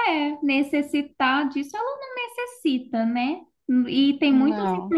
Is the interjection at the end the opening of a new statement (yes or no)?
no